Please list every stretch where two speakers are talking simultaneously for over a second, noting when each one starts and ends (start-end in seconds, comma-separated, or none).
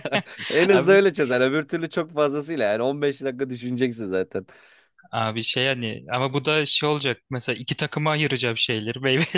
none